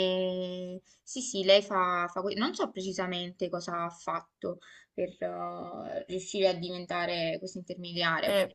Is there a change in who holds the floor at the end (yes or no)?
yes